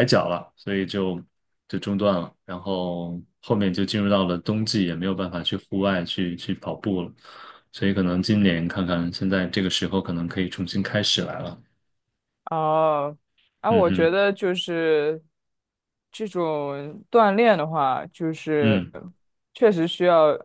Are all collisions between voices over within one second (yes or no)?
yes